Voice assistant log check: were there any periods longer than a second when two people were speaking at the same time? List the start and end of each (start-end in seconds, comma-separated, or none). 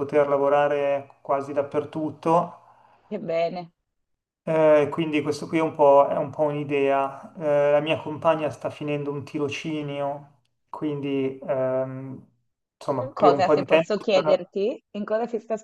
13.0-14.5